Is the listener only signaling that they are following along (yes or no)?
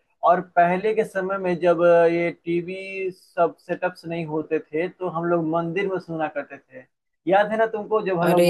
no